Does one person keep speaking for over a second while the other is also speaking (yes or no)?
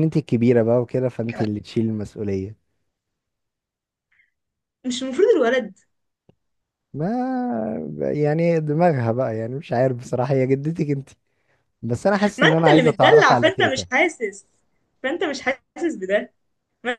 yes